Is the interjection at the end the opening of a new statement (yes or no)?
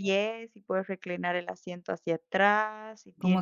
no